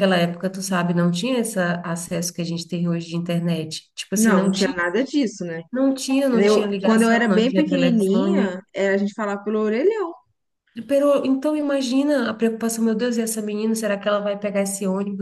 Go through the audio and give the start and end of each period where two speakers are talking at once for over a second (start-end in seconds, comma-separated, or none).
6.3-8.6